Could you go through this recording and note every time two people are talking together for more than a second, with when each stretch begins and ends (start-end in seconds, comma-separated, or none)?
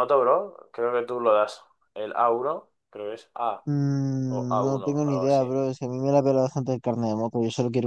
4.3-5.5